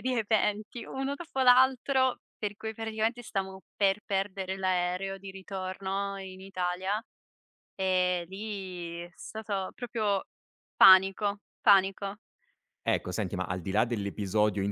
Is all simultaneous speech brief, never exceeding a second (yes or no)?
yes